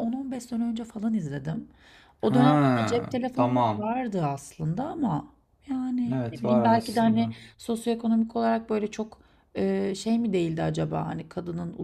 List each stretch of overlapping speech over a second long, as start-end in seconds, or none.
2.2-3.8, 6.1-7.3